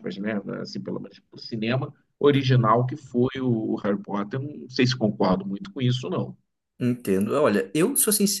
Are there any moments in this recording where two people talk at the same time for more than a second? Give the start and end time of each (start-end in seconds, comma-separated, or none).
none